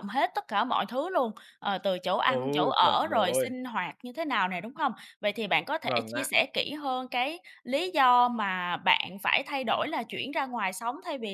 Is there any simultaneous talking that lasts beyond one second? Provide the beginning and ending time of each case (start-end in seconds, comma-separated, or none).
2.2-3.5